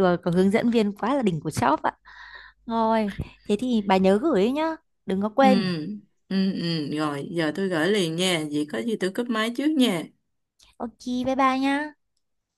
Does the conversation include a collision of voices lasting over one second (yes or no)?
no